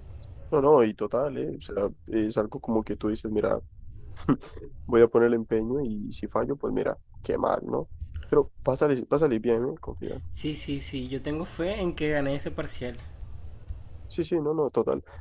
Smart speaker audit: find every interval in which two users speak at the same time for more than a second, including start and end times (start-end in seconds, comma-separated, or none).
none